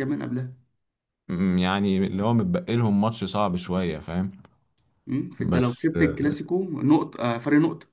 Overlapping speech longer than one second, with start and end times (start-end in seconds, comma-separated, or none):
none